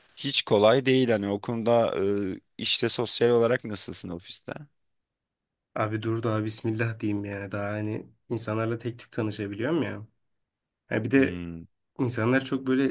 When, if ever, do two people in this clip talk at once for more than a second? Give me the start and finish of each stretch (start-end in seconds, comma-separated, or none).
none